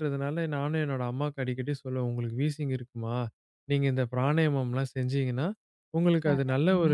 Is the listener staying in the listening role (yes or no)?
yes